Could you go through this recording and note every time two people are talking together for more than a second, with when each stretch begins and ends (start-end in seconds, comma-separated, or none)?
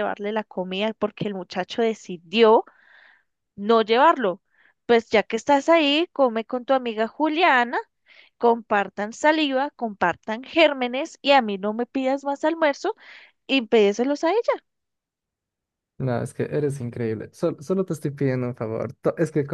none